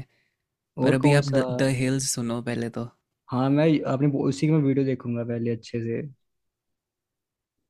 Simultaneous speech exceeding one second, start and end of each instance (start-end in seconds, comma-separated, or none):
none